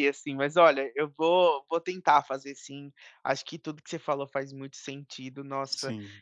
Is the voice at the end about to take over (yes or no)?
no